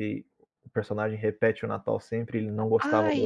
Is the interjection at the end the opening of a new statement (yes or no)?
yes